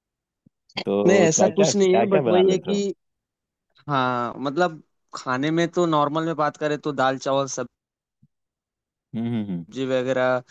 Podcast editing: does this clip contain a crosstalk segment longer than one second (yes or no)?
yes